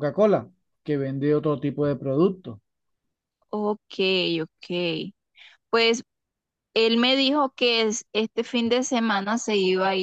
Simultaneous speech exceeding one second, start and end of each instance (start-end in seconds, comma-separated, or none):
none